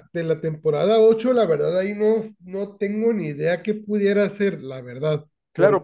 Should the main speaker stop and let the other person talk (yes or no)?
yes